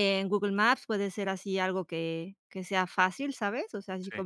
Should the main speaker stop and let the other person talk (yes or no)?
no